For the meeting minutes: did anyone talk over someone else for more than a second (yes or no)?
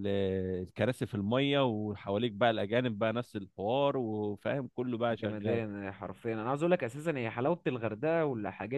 no